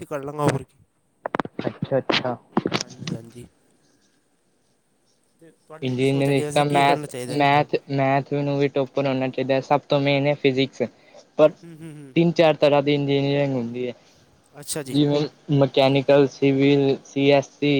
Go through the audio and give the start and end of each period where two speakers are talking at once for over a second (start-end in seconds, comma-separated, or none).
5.9-7.4